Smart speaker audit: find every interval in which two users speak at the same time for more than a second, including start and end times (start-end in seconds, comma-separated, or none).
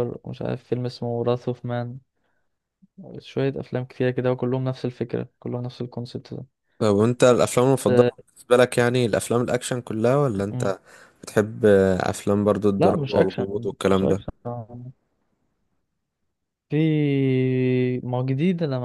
12.8-14.2